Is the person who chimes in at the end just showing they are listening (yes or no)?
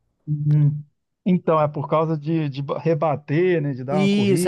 no